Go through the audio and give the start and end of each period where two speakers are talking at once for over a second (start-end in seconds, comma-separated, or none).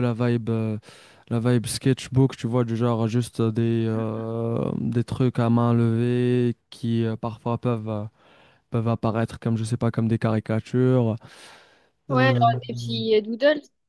none